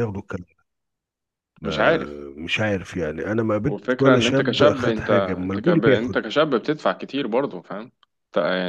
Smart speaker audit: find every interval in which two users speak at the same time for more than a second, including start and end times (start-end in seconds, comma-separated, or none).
3.6-6.2